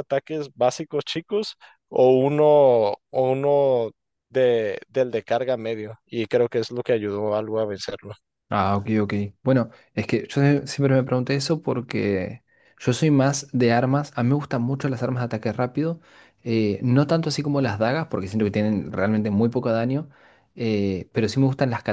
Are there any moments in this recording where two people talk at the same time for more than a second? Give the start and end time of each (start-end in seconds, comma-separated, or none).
none